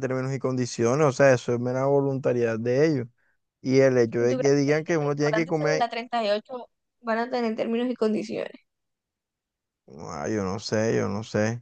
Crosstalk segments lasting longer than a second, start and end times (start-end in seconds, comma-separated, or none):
4.2-5.9